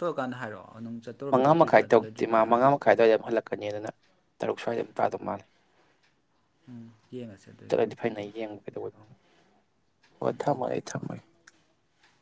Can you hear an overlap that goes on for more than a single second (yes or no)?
yes